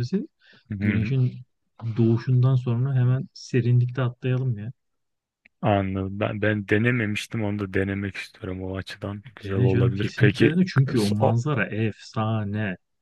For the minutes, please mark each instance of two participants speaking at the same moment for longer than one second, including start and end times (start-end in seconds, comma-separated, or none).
9.4-11.3